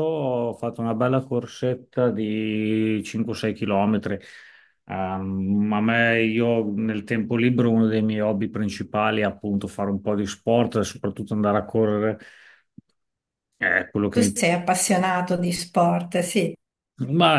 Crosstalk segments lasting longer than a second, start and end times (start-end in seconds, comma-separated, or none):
none